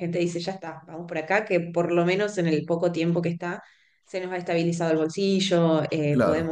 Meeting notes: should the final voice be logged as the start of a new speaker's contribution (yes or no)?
no